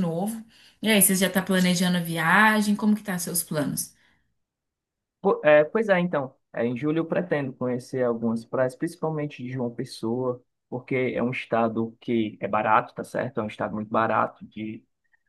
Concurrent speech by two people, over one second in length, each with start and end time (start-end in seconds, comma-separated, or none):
none